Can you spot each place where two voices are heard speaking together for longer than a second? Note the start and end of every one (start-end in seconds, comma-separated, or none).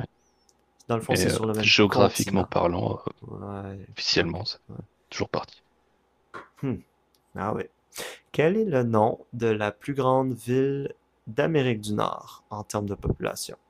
1.1-2.5